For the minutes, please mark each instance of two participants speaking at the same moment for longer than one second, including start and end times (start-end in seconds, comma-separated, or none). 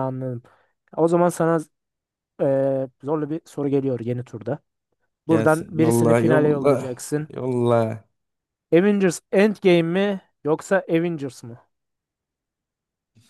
5.3-7.3